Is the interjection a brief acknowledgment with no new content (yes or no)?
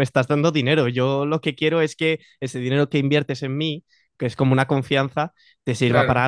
yes